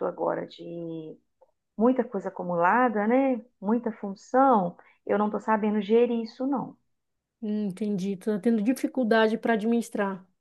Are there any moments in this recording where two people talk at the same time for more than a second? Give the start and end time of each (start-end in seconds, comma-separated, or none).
none